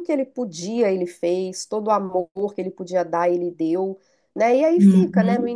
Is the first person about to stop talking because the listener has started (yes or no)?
no